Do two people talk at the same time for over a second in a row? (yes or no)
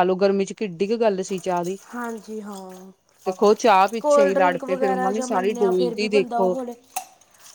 yes